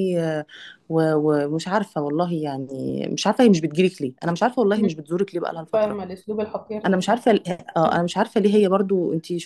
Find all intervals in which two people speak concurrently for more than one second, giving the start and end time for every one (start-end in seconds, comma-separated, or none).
none